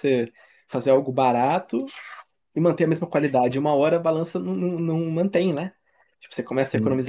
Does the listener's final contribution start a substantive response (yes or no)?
no